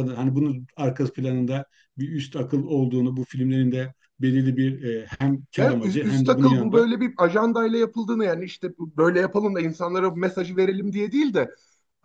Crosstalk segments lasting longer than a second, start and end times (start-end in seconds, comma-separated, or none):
5.6-6.9